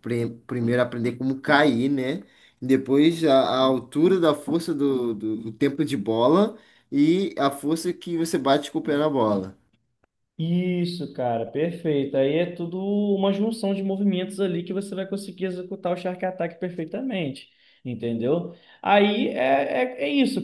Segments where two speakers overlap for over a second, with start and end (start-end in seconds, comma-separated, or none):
none